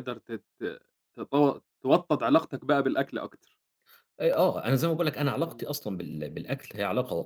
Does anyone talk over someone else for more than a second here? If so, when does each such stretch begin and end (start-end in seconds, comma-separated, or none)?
none